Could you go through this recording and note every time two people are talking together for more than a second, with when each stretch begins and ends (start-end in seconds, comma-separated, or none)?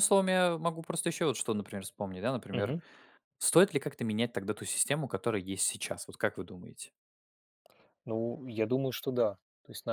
none